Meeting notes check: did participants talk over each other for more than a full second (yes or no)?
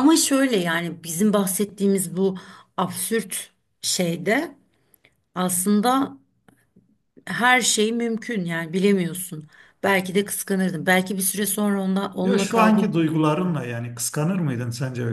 yes